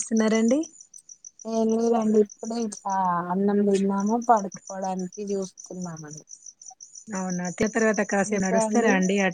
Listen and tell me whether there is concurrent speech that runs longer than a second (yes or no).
no